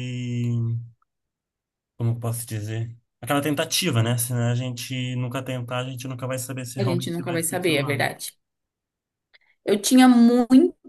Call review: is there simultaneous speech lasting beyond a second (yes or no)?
yes